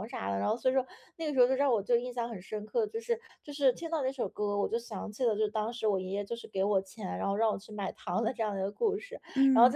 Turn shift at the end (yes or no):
no